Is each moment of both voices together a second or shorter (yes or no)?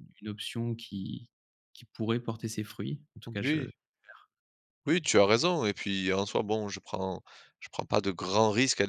yes